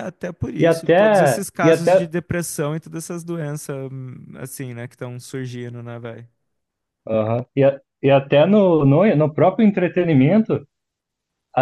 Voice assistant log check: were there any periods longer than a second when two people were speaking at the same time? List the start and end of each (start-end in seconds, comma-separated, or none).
0.6-2.1